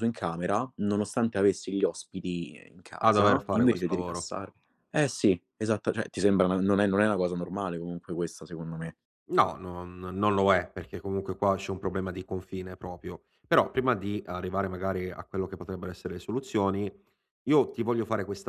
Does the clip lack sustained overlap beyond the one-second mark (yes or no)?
no